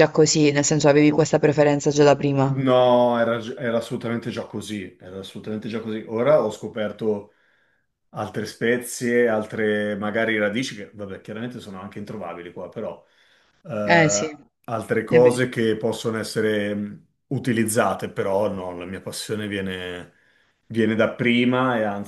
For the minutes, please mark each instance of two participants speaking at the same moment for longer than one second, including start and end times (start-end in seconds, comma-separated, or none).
none